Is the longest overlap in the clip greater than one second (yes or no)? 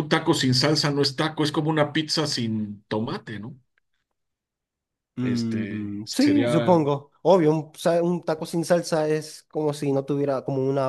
yes